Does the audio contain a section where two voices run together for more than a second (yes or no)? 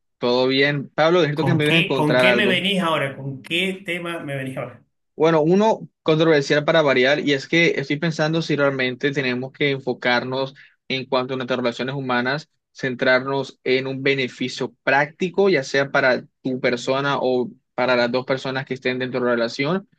yes